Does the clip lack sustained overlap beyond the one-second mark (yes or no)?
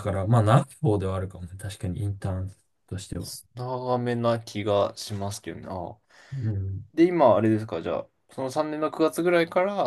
yes